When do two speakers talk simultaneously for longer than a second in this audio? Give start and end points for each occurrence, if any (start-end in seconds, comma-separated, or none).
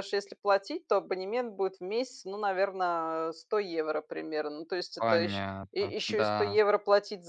5.0-6.6